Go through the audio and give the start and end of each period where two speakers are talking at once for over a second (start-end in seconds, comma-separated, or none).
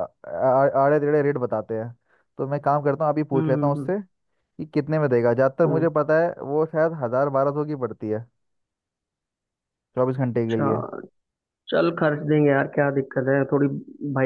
none